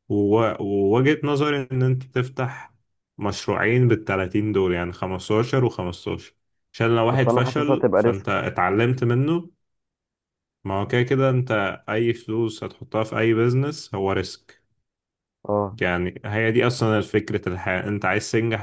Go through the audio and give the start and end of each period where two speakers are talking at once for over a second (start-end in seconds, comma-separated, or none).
7.1-8.4